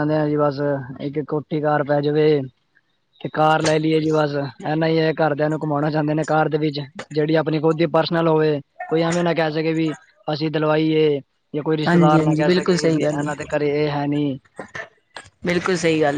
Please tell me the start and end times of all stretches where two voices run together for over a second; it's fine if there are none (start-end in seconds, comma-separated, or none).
11.9-13.5